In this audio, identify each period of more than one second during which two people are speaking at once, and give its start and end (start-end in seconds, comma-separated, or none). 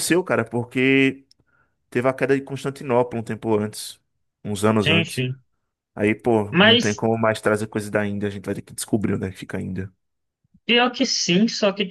none